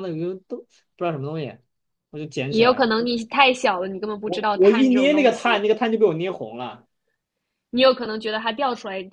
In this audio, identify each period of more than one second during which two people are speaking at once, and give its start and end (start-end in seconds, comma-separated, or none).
4.2-5.6